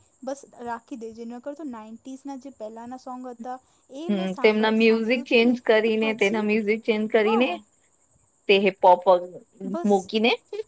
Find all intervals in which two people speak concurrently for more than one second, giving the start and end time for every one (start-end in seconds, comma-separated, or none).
4.1-6.4